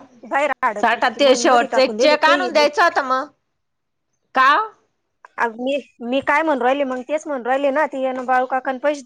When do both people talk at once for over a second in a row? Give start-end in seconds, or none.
0.8-2.6